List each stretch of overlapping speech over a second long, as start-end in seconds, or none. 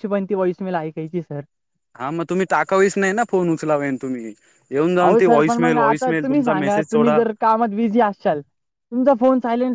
5.0-7.2